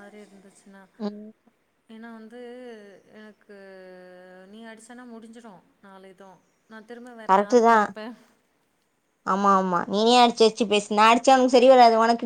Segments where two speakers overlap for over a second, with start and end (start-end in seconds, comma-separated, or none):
none